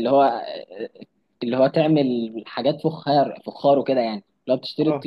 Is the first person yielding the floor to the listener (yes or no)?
no